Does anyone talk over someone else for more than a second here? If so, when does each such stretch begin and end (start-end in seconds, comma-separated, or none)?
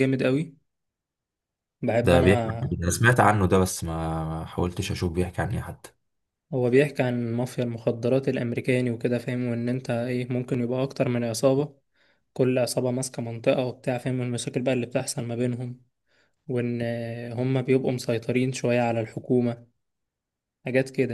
none